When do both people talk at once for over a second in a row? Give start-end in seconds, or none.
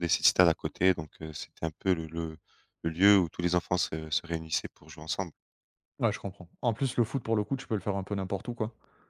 none